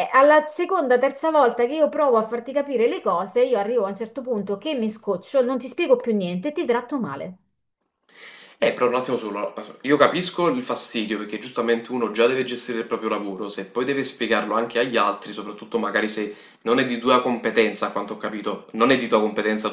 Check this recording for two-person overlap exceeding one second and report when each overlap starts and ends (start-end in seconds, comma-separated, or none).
none